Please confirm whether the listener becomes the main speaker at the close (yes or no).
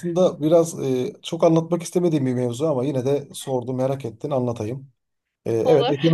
no